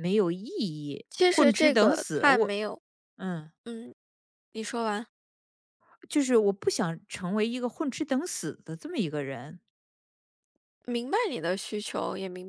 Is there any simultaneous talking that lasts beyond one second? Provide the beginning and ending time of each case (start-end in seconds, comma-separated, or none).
1.1-2.5